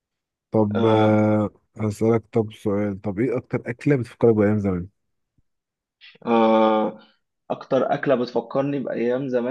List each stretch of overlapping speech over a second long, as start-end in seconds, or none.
none